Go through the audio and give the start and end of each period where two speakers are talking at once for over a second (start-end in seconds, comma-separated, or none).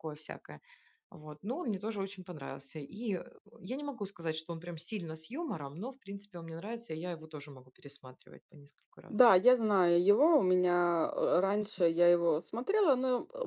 none